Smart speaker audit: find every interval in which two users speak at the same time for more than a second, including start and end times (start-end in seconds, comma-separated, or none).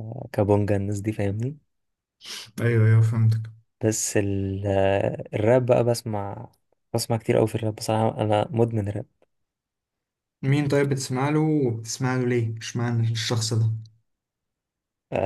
none